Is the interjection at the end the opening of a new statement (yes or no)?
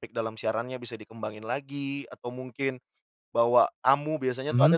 no